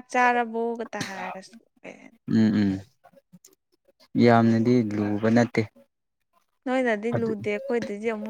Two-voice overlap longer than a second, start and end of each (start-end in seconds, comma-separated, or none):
none